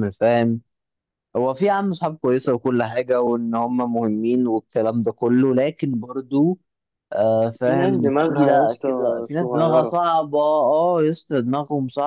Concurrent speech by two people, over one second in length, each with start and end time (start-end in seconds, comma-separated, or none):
7.6-10.0